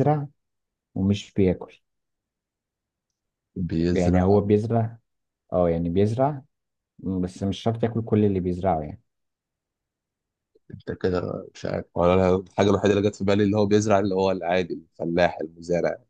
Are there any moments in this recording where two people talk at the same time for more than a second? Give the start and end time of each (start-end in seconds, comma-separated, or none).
none